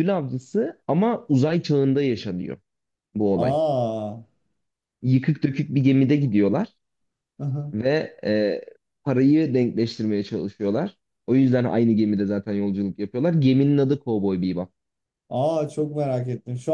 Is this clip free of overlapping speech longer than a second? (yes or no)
yes